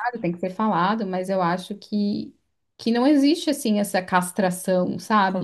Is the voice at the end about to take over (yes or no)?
yes